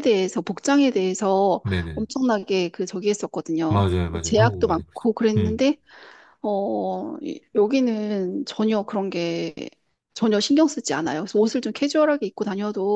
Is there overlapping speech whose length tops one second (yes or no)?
yes